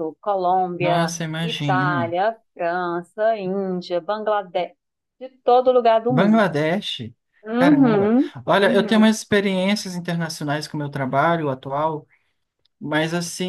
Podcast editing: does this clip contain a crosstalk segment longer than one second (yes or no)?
yes